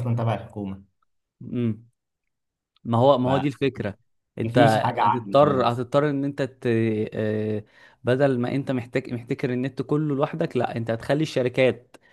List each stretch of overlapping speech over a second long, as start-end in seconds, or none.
4.4-5.8